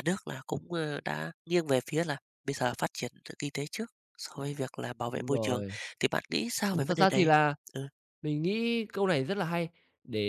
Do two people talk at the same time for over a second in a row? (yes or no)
no